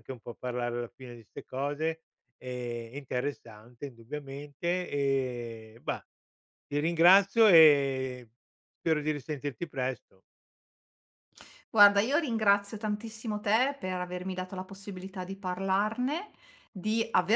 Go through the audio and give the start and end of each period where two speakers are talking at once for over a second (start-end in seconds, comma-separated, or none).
none